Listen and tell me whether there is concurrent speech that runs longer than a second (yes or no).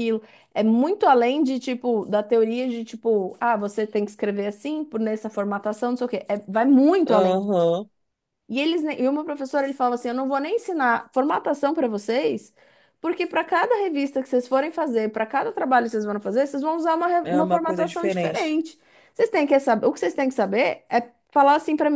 yes